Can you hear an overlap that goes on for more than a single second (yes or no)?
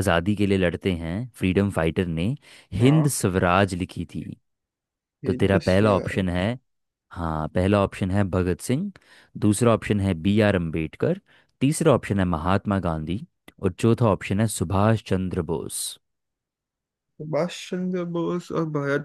yes